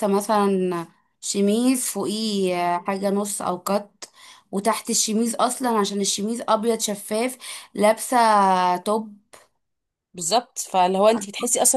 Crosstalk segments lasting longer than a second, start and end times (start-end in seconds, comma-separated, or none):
none